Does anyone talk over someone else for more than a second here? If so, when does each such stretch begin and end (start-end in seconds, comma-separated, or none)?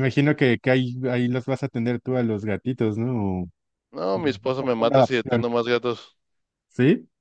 4.1-5.4